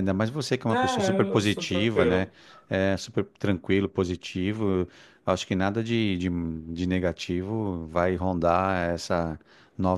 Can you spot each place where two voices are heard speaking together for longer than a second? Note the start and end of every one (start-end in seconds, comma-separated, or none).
0.7-2.3